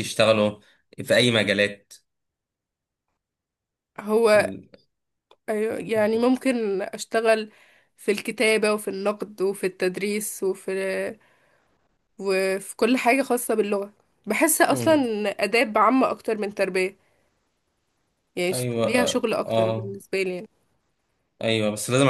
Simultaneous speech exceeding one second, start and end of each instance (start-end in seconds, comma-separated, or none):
18.5-19.9